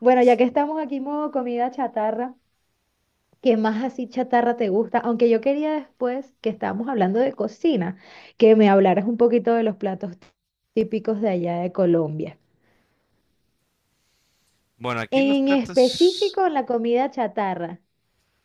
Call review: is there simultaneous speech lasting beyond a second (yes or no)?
yes